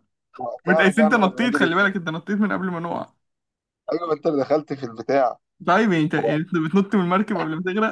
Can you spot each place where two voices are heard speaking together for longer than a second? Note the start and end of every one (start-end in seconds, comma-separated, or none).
0.7-2.0